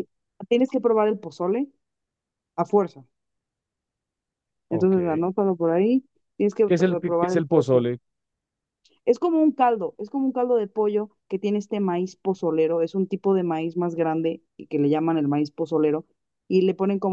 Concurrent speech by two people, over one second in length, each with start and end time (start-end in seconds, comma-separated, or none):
6.6-7.9